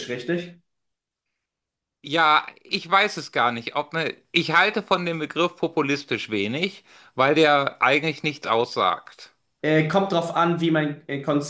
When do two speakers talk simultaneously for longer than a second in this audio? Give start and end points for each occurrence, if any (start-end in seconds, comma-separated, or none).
none